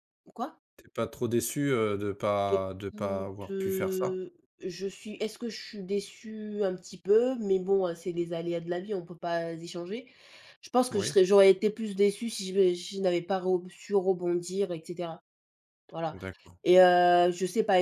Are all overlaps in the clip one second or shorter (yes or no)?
no